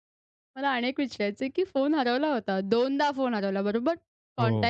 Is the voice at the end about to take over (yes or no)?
no